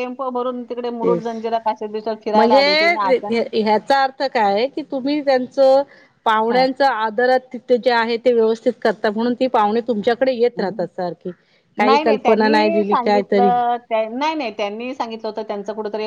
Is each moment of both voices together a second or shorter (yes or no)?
no